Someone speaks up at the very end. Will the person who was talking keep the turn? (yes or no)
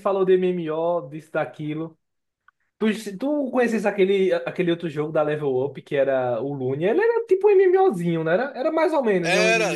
no